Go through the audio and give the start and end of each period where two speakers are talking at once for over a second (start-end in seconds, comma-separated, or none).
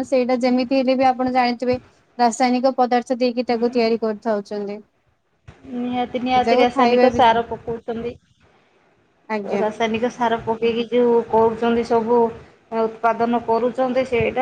none